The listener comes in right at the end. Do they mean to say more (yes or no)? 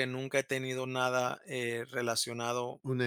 yes